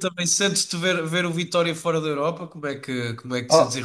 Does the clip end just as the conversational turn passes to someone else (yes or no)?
yes